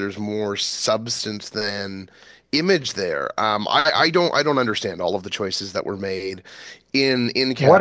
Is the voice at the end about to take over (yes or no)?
yes